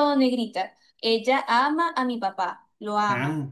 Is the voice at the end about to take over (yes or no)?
no